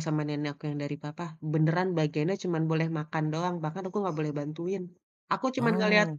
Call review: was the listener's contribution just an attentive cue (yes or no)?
yes